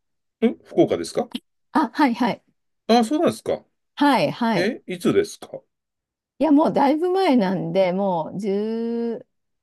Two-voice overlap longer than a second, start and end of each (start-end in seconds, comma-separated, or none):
none